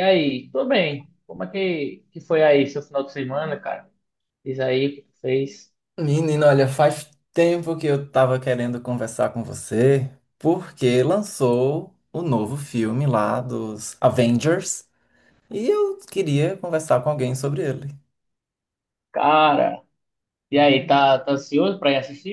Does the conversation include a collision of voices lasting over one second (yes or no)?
no